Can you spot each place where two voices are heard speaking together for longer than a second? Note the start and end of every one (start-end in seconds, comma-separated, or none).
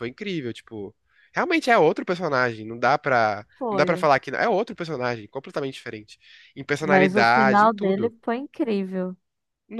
6.8-8.1